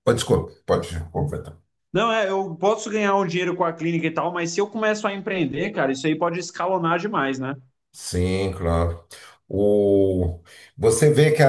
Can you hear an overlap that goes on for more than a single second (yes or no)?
no